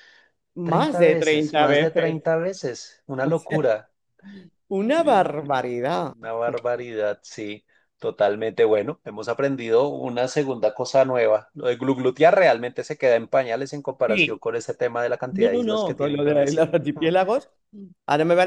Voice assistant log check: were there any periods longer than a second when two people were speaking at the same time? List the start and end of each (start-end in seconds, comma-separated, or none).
0.6-2.2, 15.3-16.7